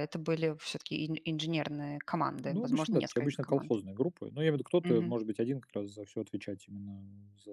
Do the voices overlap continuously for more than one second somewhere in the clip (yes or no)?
yes